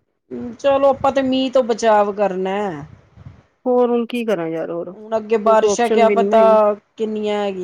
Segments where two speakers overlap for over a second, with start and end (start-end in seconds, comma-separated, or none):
4.9-6.6